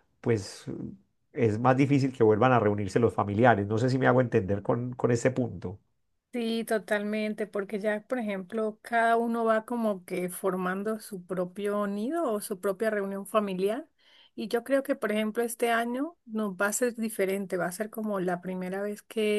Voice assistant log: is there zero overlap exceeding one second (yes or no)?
yes